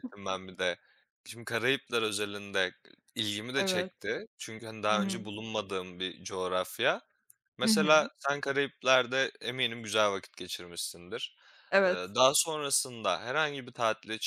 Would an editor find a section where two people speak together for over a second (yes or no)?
no